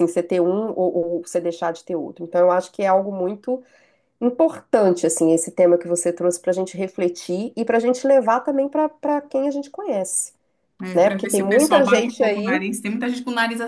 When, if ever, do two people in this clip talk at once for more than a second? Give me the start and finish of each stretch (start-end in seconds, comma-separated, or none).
10.9-12.6